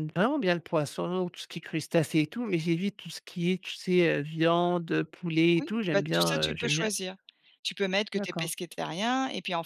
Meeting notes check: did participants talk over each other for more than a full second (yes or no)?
yes